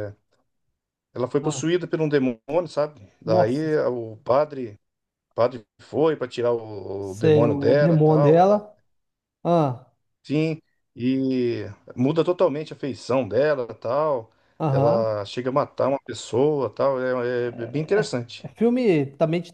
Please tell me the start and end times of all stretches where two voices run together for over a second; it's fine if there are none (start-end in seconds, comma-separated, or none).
7.0-8.6